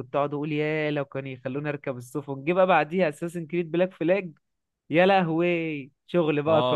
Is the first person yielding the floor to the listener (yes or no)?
yes